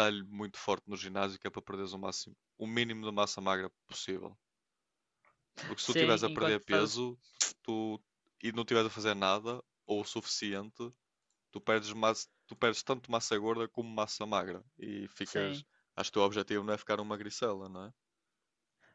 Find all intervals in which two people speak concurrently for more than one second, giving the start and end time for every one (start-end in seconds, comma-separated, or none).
5.8-7.0